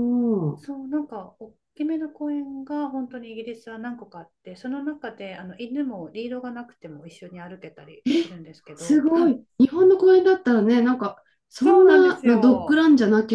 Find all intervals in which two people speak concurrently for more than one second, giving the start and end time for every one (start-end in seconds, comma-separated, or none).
11.6-12.8